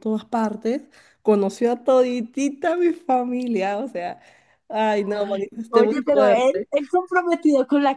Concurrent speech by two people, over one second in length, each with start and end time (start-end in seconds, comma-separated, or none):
5.0-6.7